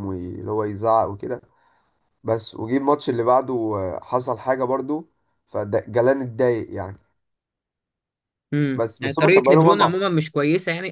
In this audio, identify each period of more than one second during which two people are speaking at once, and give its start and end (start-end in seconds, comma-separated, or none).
8.8-10.1